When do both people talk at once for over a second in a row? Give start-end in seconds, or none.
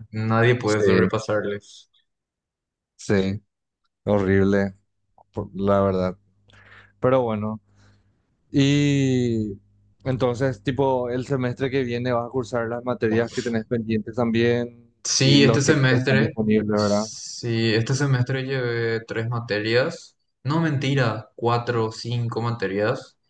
15.0-17.0